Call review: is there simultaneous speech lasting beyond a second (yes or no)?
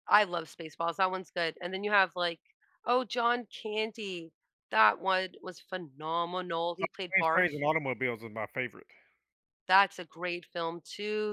no